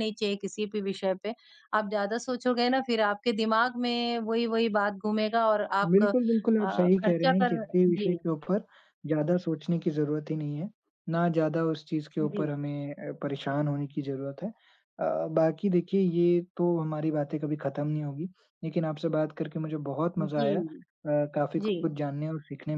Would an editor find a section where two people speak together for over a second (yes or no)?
yes